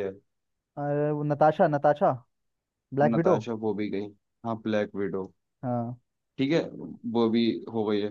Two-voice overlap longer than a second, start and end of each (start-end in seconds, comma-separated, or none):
none